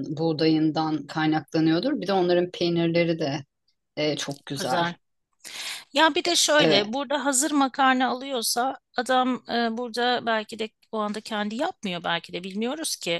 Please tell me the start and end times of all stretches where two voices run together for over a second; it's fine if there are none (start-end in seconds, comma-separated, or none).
none